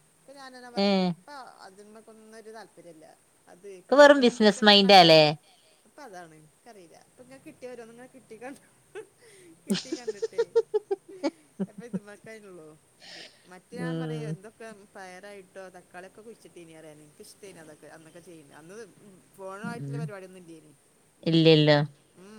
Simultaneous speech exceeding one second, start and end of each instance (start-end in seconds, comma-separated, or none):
3.8-5.2